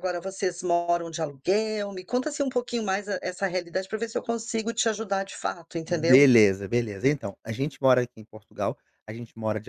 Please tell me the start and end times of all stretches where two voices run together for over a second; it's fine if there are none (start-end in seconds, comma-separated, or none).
none